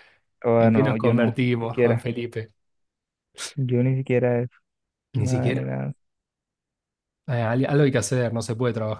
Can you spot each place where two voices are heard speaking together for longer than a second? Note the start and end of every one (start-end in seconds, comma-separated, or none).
0.6-2.1